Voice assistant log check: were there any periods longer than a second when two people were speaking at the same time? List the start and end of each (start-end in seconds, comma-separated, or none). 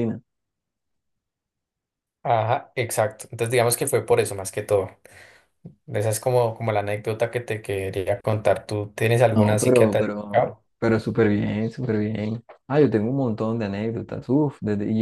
9.3-10.6